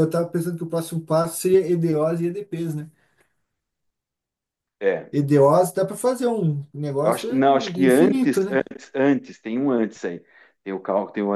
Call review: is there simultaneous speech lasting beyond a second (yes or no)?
yes